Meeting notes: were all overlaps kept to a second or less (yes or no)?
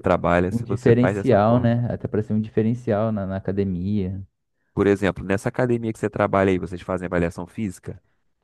no